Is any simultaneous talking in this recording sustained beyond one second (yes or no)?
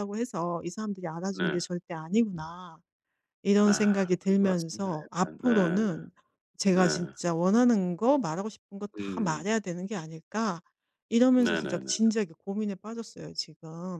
yes